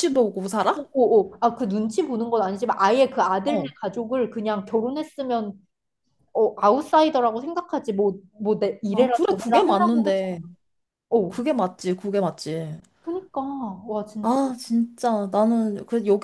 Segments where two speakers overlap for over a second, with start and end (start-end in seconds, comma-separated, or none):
8.9-10.4